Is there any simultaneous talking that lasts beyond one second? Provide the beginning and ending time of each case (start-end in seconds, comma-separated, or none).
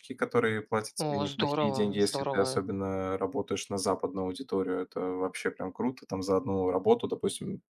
1.0-2.6